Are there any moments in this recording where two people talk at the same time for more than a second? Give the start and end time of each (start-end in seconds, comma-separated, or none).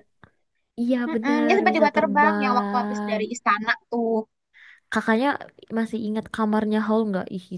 1.1-3.2